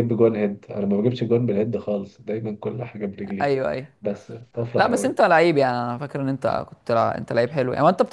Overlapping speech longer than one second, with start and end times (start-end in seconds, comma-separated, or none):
none